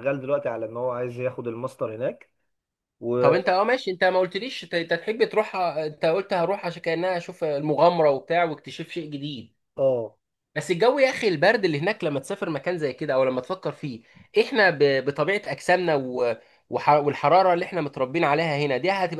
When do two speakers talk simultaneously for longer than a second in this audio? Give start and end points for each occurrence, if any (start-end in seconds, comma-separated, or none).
none